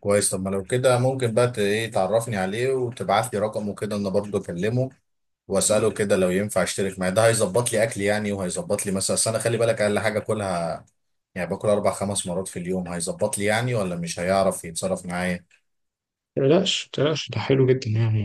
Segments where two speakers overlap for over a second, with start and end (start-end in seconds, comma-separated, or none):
none